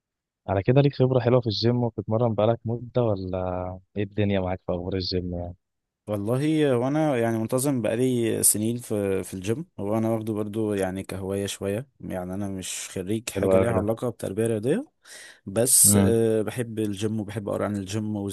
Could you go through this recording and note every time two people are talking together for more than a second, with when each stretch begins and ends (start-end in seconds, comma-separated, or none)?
none